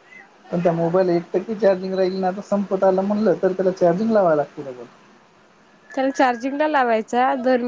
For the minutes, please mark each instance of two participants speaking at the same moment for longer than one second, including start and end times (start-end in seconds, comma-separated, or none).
none